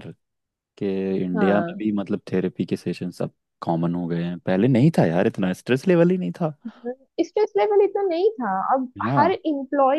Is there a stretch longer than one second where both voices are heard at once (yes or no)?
no